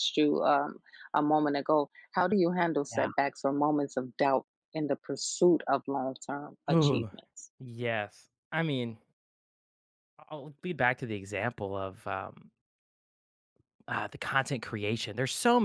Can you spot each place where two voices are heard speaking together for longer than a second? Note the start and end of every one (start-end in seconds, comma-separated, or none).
none